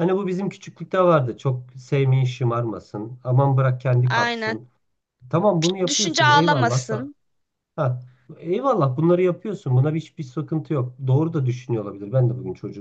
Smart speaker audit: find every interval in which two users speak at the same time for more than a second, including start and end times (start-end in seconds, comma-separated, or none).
5.9-7.1